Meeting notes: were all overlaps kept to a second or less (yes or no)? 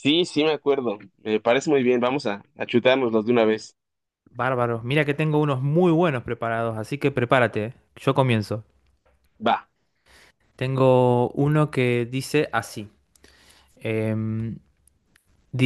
yes